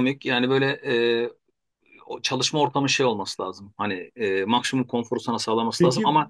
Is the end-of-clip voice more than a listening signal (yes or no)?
no